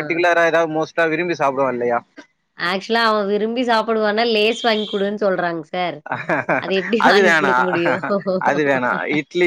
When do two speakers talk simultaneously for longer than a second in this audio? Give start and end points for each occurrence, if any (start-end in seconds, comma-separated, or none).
none